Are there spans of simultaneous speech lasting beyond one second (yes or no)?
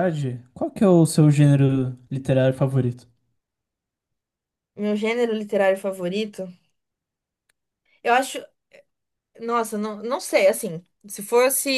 no